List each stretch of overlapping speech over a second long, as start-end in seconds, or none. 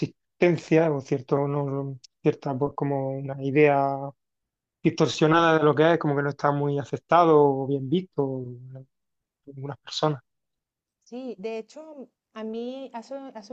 none